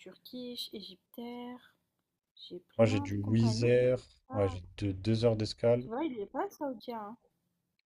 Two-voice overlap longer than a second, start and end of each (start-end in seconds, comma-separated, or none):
2.8-4.6